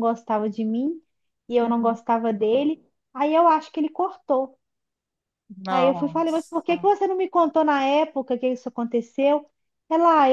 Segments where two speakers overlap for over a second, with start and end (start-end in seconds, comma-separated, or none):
5.7-6.9